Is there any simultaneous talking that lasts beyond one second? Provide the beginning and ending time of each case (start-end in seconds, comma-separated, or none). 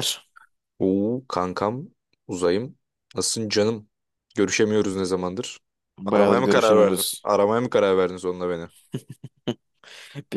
6.0-7.3